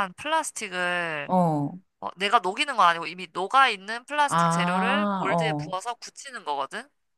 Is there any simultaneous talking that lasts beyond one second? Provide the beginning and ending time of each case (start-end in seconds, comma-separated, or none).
4.3-5.7